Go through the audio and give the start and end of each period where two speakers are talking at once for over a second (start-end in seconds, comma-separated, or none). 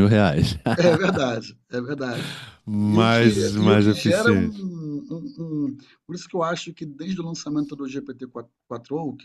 2.8-4.7